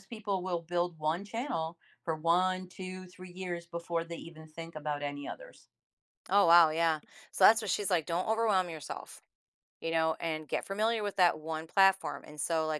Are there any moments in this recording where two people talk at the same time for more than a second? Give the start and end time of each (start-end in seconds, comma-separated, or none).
none